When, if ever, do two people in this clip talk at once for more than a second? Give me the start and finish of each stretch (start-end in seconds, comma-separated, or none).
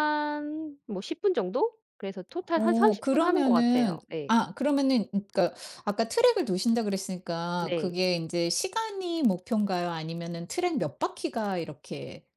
2.5-4.3